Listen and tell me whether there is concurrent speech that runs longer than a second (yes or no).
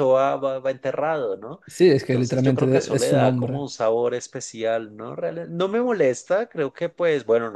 yes